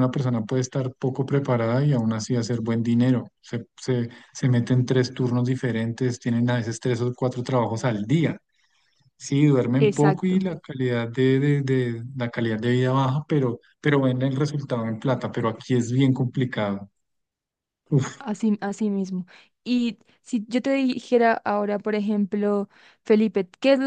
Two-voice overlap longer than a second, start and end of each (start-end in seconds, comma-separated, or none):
none